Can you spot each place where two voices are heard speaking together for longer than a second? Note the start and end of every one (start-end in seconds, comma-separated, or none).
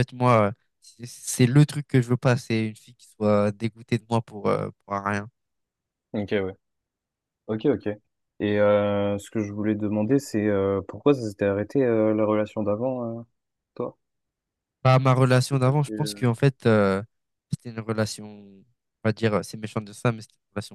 none